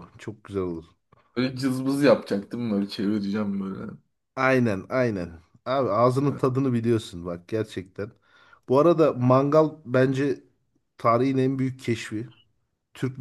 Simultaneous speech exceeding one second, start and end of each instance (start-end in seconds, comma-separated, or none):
none